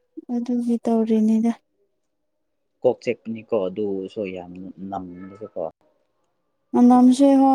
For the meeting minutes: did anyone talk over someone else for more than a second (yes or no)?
no